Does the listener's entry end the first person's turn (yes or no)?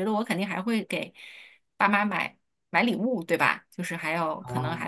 no